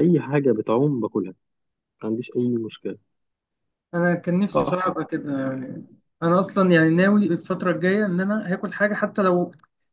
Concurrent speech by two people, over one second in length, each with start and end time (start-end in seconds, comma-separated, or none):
none